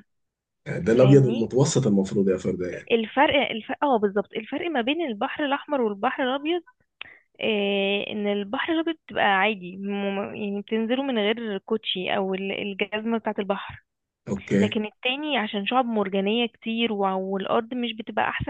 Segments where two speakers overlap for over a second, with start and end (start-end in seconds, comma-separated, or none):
none